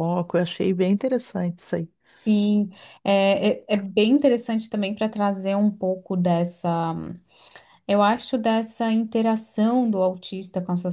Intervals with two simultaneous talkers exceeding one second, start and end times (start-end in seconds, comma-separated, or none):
none